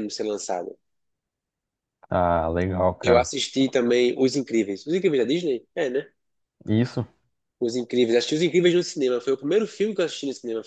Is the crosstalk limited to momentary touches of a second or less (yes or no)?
yes